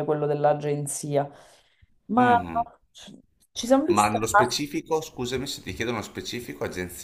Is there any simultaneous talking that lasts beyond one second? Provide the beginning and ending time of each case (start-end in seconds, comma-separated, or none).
none